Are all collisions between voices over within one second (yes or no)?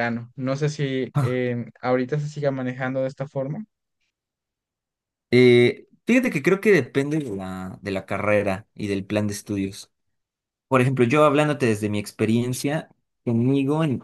yes